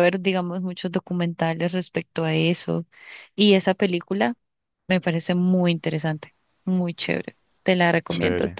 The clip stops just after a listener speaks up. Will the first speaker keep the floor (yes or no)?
yes